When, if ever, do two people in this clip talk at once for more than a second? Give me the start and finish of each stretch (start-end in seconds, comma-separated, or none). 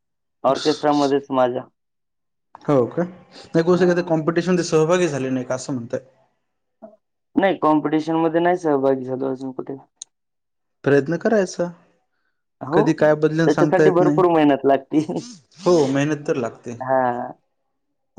12.7-14.2